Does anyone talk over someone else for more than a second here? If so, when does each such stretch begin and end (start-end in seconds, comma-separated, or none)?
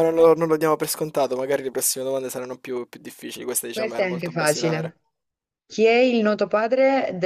3.7-5.0